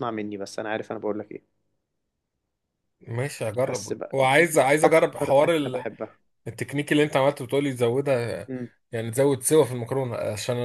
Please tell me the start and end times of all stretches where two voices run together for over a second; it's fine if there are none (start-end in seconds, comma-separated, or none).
3.6-5.5